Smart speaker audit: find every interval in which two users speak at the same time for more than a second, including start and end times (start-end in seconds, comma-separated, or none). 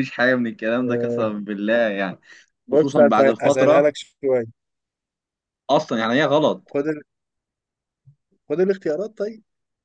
2.7-4.0